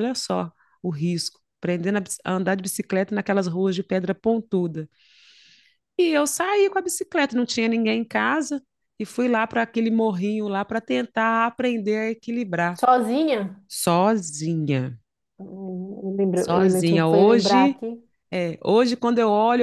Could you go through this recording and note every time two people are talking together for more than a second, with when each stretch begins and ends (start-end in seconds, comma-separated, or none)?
16.3-17.8